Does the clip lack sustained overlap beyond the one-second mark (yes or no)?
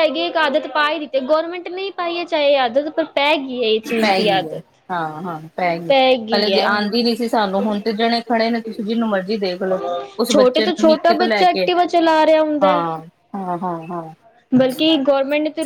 no